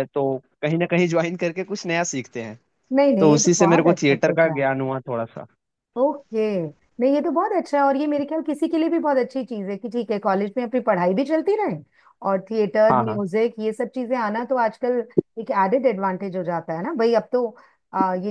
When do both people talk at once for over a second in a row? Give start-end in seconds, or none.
3.2-4.6